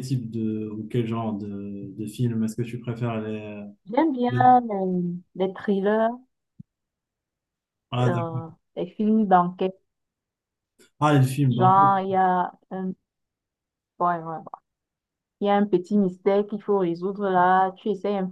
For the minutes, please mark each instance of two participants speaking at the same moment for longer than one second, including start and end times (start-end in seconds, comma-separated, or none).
none